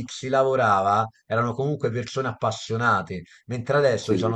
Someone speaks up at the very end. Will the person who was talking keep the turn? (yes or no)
yes